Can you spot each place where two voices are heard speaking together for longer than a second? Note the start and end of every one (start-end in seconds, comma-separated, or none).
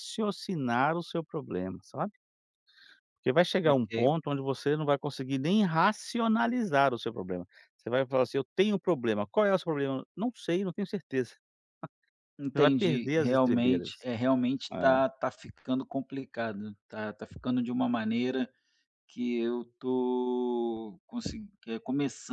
12.5-14.1